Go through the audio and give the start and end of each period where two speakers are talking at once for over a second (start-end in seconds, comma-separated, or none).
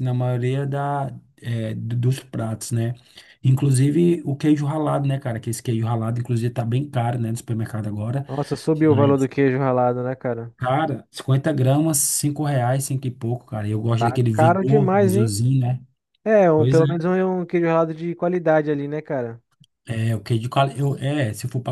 14.0-15.3